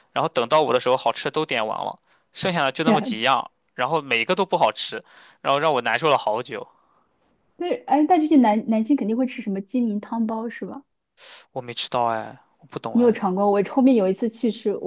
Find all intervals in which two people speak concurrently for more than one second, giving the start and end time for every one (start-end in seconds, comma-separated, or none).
none